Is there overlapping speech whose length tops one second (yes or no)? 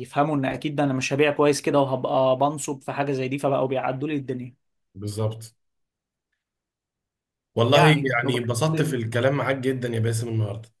yes